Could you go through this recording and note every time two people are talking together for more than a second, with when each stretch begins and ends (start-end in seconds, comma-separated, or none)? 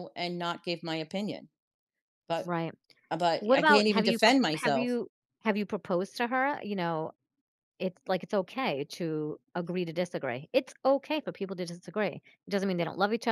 3.4-5.0